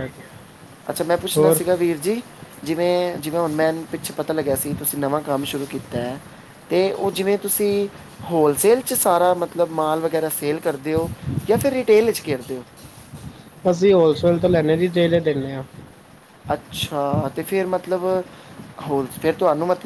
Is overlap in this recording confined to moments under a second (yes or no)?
yes